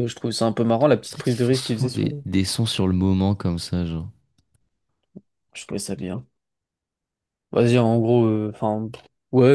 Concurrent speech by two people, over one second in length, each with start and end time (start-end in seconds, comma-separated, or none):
1.0-2.2